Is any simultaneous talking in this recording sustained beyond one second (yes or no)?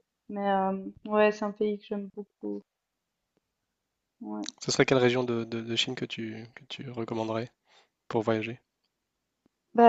no